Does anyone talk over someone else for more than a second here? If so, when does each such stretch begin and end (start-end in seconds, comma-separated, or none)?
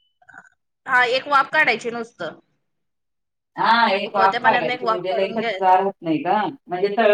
4.1-5.6